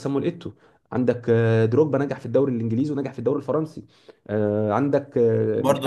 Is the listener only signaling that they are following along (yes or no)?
no